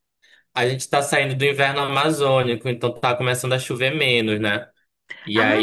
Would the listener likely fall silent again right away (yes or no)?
no